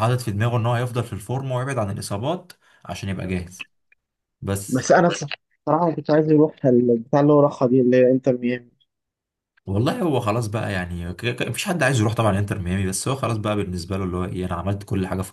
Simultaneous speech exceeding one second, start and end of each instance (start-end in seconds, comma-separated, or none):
none